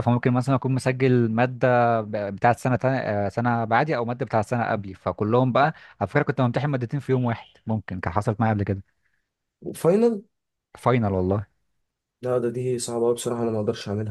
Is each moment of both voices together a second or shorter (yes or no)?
yes